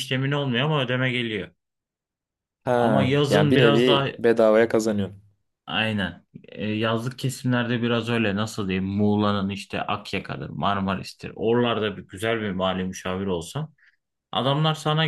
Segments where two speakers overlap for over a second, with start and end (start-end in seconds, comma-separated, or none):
2.7-4.1